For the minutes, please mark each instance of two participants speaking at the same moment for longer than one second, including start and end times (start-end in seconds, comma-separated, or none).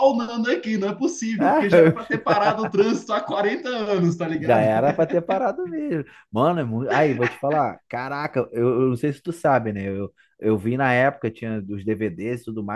none